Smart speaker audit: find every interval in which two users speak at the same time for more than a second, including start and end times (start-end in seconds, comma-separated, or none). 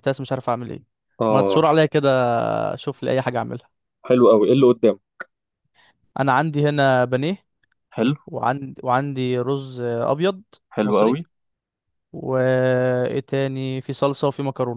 none